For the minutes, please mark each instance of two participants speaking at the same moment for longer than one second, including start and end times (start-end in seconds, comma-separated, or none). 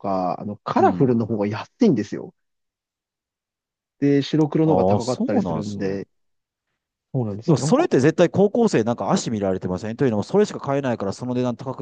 4.7-6.0